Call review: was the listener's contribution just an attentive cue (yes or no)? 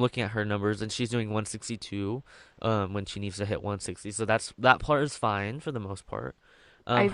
yes